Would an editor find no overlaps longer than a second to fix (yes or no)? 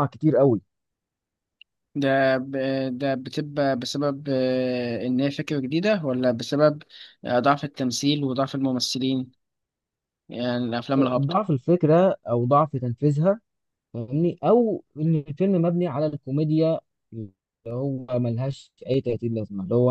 yes